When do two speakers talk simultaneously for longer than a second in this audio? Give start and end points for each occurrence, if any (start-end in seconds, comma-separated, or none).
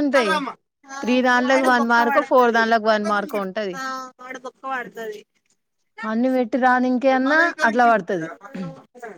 1.0-2.6